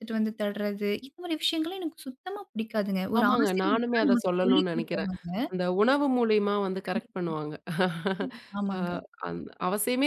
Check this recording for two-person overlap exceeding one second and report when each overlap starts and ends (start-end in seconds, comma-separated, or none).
3.2-5.1